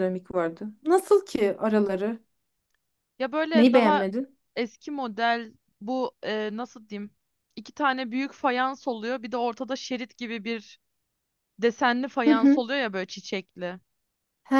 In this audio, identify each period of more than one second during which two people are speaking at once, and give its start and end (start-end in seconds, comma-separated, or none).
none